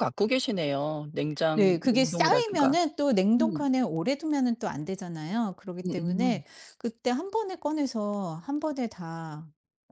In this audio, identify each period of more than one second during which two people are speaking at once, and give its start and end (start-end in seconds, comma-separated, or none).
1.5-2.8